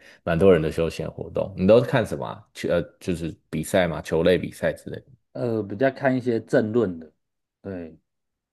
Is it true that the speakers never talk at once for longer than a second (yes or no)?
yes